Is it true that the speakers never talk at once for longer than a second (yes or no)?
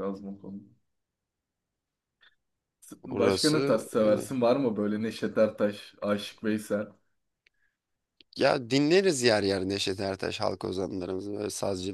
no